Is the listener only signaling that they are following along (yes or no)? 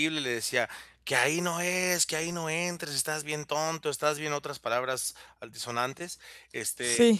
yes